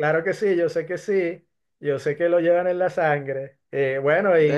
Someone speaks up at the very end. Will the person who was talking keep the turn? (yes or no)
no